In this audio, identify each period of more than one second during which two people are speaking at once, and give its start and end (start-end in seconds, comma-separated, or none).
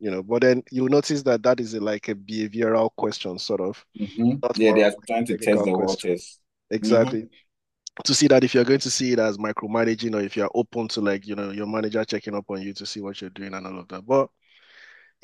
4.4-6.1